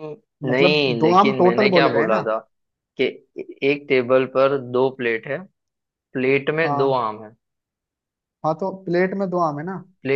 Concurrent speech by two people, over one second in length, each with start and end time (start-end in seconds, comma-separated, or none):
0.5-2.2